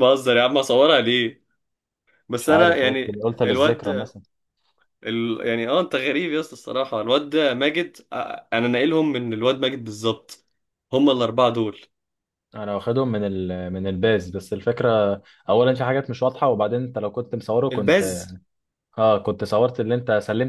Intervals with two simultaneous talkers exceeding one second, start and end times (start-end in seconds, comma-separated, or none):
2.4-3.9